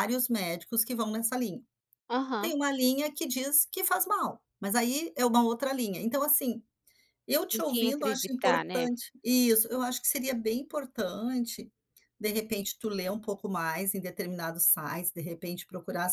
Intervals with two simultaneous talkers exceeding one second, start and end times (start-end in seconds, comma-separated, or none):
7.5-8.9